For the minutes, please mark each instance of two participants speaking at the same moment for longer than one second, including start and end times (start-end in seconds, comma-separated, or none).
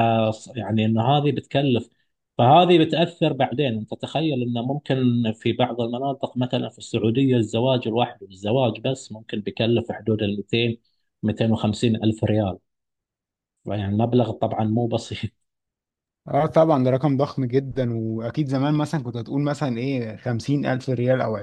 none